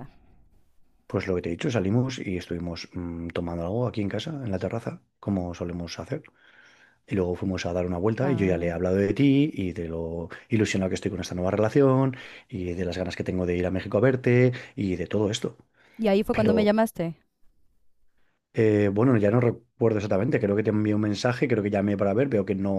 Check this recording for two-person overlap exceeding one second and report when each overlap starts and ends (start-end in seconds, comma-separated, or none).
none